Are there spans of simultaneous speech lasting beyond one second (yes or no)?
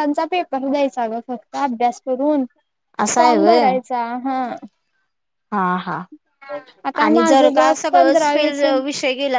yes